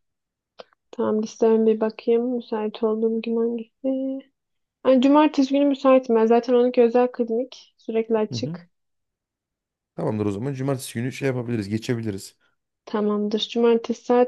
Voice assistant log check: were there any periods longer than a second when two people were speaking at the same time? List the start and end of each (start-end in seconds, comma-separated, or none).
none